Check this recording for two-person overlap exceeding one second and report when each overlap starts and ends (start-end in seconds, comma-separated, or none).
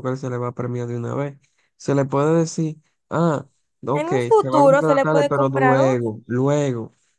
3.9-6.1